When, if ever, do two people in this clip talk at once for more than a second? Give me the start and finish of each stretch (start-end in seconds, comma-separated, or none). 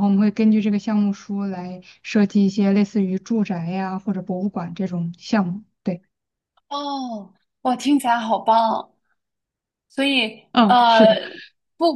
none